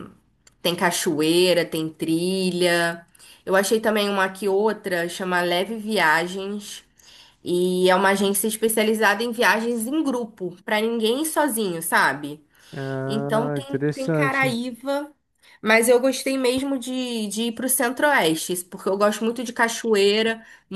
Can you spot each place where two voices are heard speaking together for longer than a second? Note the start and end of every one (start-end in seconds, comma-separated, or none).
13.1-14.6